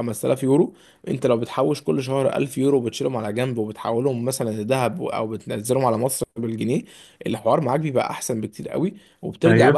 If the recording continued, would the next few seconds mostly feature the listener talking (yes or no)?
no